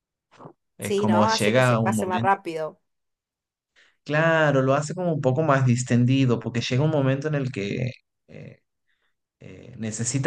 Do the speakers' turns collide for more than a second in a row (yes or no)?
yes